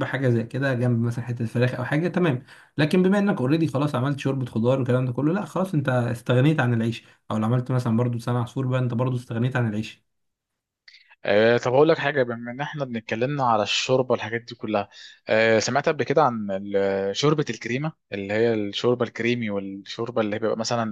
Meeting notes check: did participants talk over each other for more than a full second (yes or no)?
no